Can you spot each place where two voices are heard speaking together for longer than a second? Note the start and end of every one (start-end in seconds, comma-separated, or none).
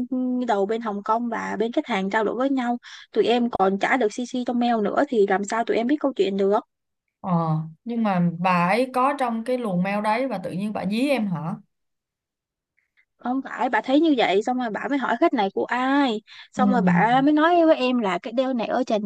none